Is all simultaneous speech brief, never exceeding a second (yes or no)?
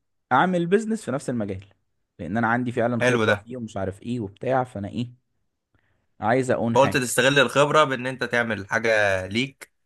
yes